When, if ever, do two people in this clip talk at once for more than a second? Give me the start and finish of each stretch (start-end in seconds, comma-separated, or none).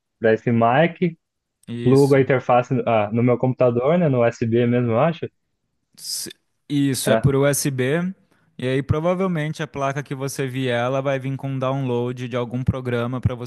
none